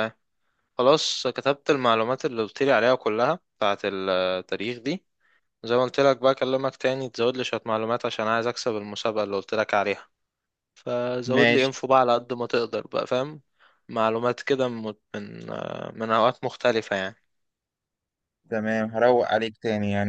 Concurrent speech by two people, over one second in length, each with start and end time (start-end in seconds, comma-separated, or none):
none